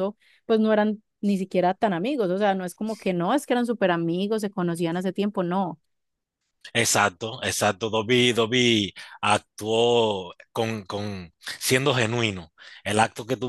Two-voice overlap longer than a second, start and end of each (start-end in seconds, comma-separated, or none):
none